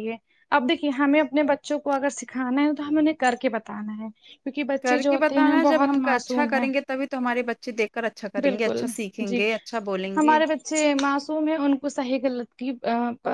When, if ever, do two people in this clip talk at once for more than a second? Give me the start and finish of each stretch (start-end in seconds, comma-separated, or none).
4.8-6.7